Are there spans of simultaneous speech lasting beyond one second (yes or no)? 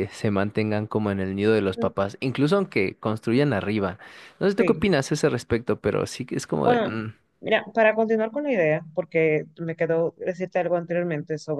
no